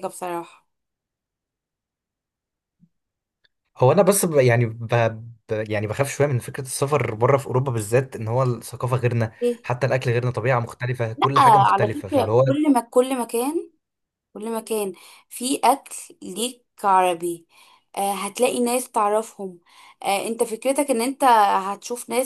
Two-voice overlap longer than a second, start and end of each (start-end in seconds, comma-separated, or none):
11.2-12.4